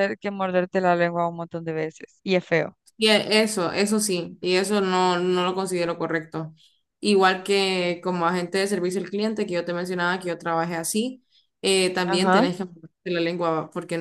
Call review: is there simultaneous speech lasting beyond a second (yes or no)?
no